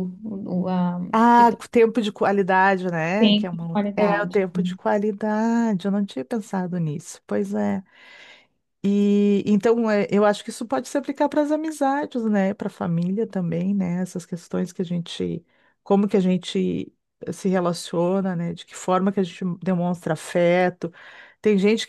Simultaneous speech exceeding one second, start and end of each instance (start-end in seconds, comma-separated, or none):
3.2-4.4